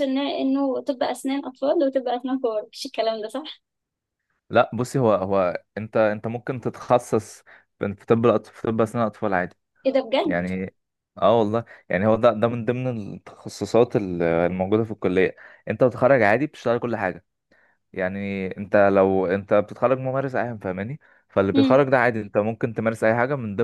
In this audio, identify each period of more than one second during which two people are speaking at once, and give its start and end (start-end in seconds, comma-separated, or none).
none